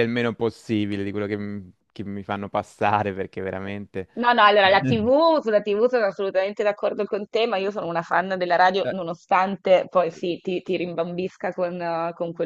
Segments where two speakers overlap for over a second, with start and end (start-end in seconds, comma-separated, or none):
none